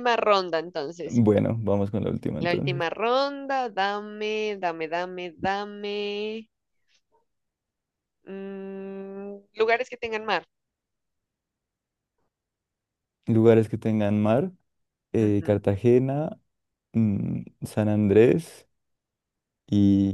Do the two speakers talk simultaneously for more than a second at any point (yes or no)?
no